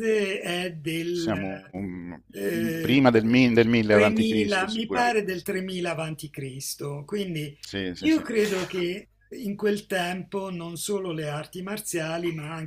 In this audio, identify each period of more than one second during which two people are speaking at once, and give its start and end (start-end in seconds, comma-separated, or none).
3.9-5.2